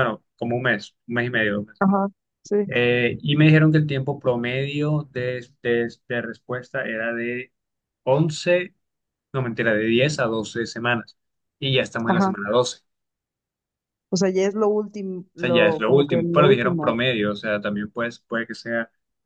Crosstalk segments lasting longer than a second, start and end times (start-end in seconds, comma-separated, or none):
15.4-17.0